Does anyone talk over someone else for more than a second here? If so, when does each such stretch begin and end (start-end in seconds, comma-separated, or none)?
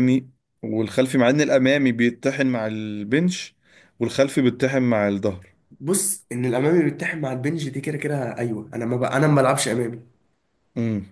none